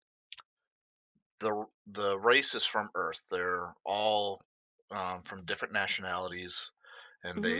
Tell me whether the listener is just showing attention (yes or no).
yes